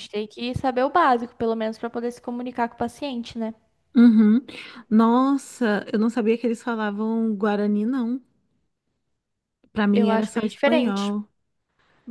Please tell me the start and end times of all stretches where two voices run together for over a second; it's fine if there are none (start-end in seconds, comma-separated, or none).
9.9-11.1